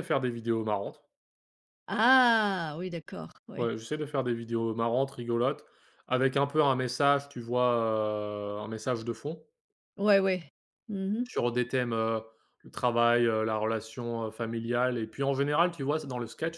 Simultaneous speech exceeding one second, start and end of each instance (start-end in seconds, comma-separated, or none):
none